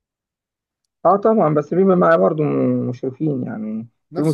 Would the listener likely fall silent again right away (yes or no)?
no